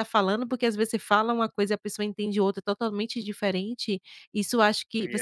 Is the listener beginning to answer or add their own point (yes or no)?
no